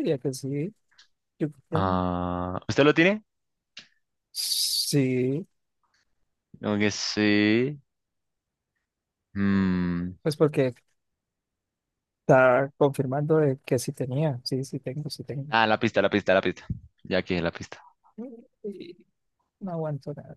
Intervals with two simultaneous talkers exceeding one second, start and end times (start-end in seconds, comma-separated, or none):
none